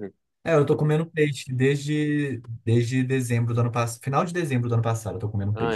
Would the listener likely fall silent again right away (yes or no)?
no